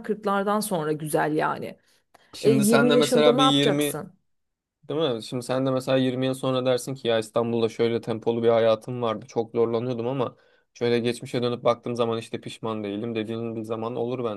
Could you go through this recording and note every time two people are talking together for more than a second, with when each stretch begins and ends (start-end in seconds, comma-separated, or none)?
2.4-4.0